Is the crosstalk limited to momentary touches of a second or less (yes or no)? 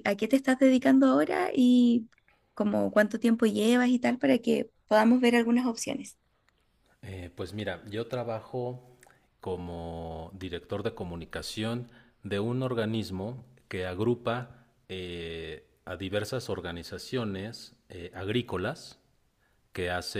yes